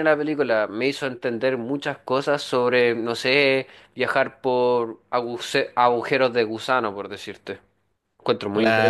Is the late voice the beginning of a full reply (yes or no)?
yes